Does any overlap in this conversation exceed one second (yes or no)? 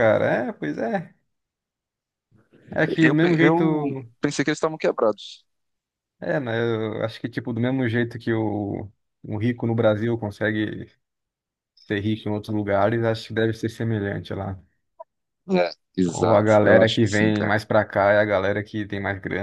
yes